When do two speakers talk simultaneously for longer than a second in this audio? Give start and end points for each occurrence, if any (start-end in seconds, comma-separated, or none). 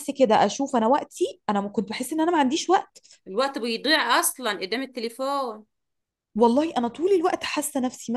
none